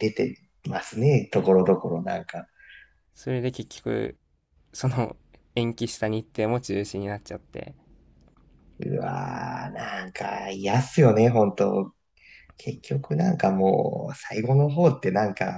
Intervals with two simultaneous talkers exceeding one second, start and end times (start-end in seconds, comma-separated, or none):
none